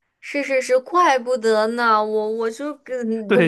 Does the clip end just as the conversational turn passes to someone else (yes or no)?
yes